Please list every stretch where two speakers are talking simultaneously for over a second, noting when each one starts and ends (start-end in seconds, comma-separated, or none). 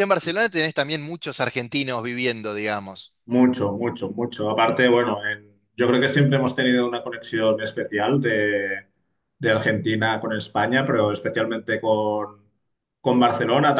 none